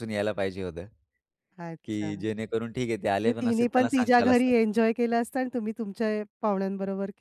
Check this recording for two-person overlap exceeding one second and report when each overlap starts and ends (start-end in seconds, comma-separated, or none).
3.2-4.5